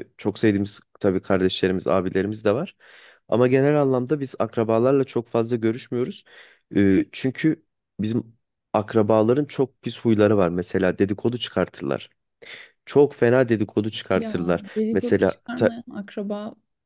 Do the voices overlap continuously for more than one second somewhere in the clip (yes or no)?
yes